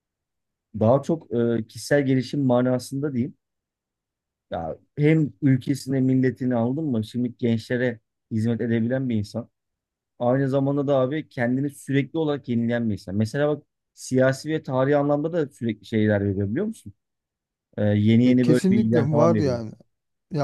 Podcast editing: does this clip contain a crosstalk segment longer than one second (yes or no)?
yes